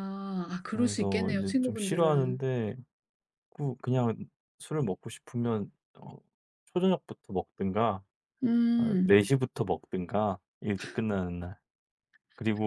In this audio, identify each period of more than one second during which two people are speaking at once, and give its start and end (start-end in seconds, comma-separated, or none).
0.7-2.4